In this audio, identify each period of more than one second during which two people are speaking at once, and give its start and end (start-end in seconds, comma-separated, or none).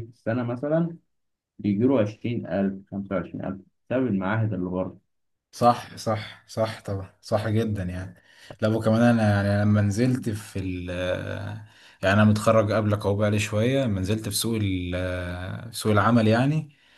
none